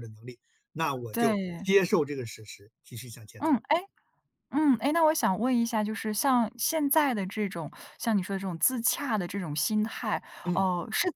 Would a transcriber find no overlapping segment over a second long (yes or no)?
yes